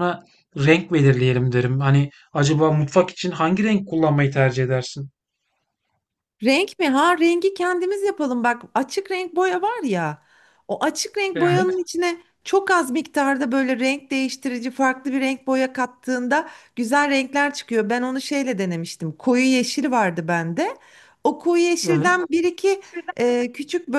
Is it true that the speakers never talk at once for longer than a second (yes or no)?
yes